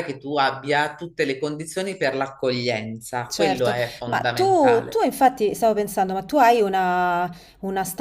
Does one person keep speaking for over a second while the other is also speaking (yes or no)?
yes